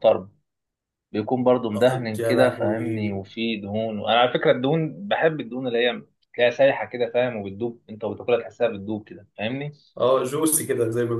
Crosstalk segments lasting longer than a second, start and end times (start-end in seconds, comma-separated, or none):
1.7-3.2